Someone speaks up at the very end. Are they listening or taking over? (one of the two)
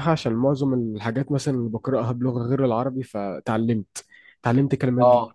listening